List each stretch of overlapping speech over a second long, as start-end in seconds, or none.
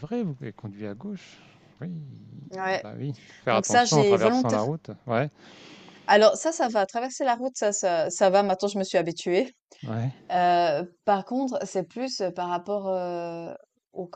3.5-4.7